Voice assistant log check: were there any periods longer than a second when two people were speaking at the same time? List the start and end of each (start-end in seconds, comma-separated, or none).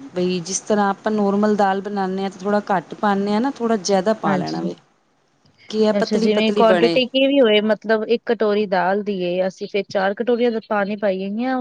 none